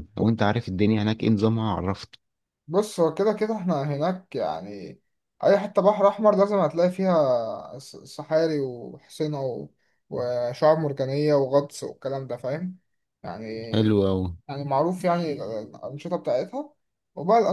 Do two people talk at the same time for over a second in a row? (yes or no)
no